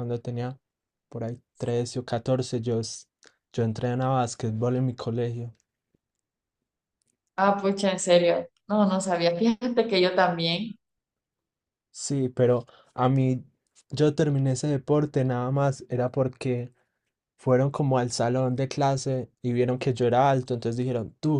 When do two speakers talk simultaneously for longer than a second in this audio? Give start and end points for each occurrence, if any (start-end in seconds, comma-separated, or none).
none